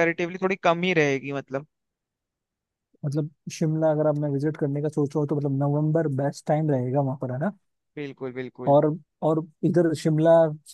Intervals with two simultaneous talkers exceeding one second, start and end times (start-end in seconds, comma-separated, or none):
none